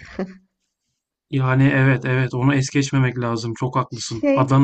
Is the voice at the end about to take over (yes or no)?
no